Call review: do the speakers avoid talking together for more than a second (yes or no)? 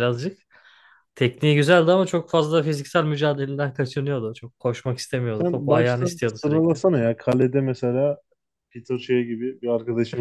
no